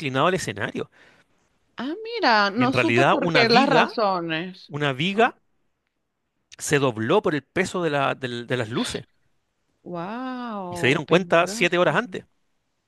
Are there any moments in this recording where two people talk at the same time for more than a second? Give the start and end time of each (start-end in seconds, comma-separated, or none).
2.5-4.0, 10.7-12.0